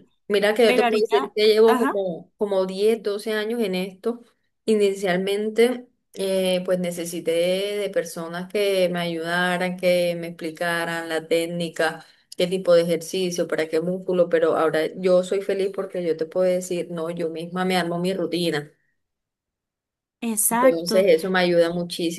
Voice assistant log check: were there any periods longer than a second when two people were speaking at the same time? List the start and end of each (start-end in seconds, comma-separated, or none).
0.6-2.0